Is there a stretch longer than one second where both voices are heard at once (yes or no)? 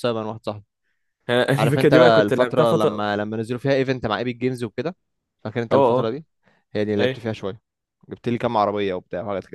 yes